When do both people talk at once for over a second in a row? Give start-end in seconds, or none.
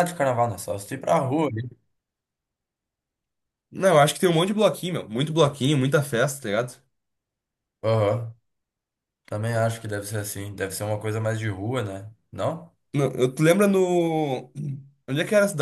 none